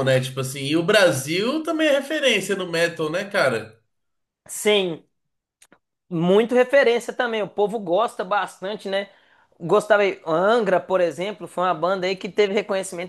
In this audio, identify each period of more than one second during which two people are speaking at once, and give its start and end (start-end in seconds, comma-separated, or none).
none